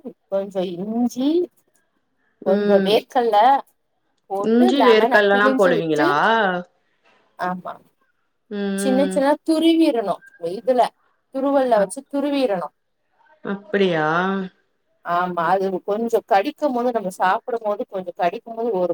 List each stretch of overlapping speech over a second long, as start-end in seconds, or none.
4.5-6.1